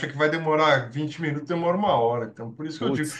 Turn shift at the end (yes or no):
no